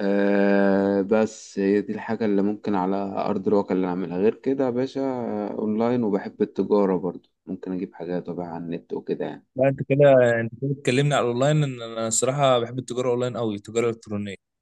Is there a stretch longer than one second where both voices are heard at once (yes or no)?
no